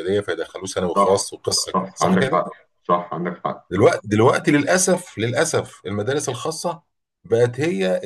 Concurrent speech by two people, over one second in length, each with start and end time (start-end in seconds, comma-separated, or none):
0.9-2.4